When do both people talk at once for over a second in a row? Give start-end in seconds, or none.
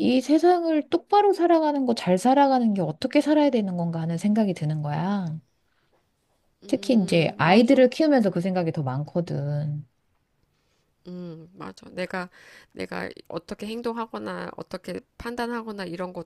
6.7-7.9